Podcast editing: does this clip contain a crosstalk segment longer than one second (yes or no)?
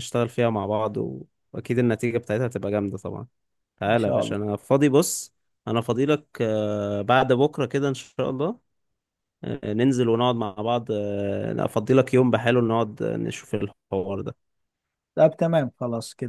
no